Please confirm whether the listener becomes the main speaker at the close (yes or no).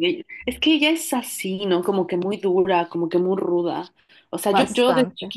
no